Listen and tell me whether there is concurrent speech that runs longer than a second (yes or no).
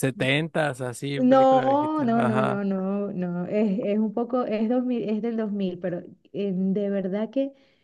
yes